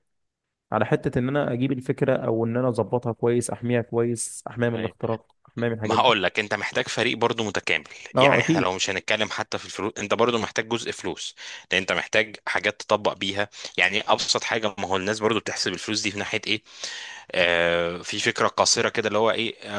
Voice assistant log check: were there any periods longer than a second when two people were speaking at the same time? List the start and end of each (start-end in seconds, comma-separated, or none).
none